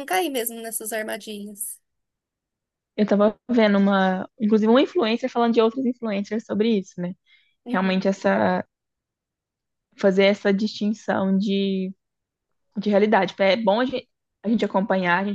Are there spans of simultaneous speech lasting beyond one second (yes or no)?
no